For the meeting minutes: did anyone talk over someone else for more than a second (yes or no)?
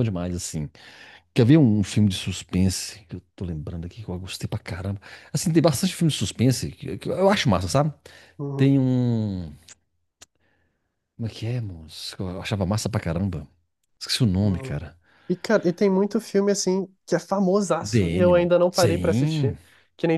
yes